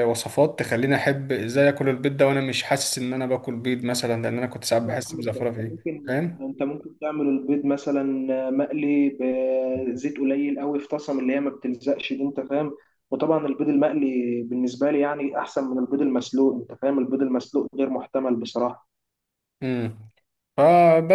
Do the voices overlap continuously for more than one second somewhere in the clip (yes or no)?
yes